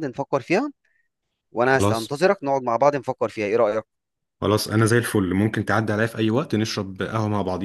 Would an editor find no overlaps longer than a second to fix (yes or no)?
yes